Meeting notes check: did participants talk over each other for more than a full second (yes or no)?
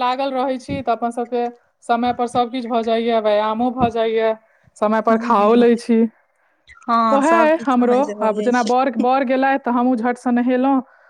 yes